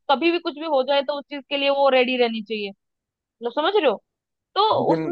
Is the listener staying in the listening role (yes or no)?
yes